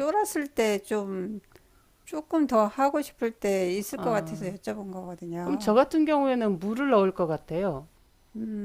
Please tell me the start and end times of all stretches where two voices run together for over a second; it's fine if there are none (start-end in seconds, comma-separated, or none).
none